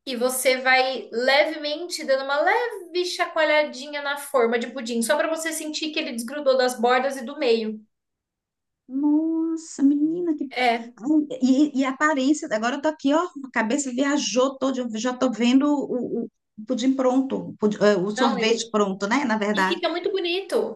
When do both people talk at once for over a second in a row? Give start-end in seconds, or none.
none